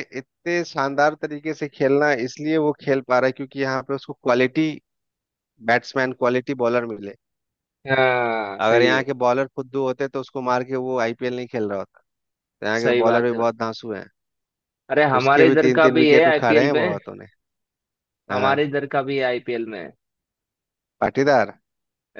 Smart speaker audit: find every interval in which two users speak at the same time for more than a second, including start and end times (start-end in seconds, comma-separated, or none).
15.2-17.0